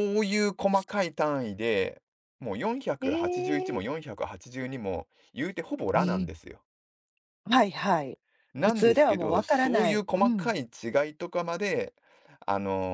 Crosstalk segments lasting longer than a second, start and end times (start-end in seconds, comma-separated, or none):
8.6-10.5